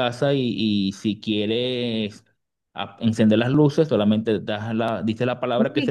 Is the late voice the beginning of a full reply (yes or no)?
yes